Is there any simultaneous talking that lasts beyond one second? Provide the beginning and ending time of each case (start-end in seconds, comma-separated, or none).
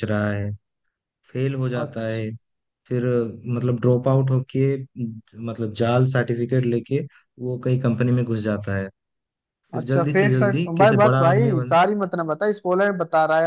9.7-11.8